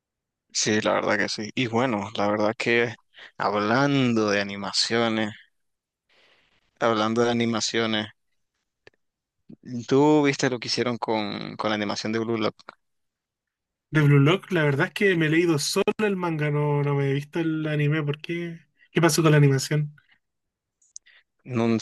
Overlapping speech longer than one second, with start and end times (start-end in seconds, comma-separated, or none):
none